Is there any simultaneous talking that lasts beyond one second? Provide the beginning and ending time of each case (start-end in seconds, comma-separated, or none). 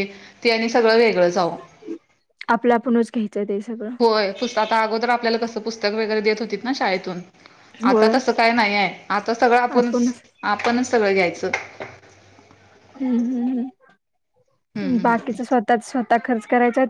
none